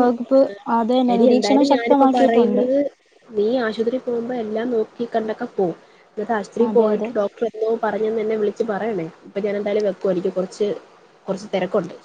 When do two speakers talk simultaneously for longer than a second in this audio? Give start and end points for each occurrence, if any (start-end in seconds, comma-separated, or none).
1.1-2.6